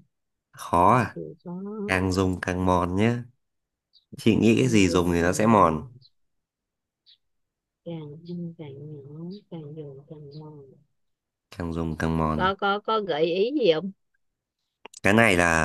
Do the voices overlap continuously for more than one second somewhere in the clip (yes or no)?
yes